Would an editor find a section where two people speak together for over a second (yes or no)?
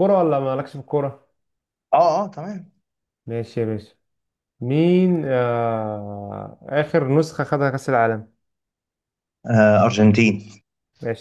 no